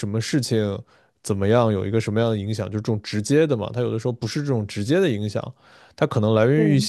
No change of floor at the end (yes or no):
yes